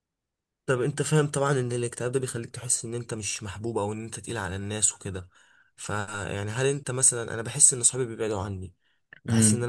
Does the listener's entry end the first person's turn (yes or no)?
no